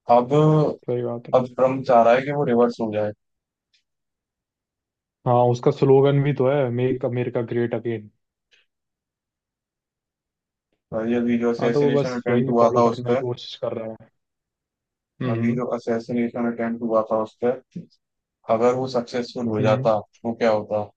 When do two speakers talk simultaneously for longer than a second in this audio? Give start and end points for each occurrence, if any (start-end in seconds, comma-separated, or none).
11.6-13.2